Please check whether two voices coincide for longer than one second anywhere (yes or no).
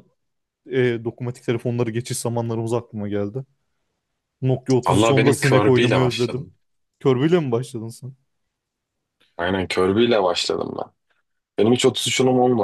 yes